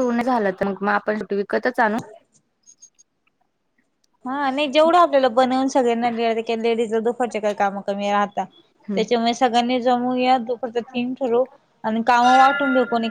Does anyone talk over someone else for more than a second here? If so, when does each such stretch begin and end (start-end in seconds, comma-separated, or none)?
none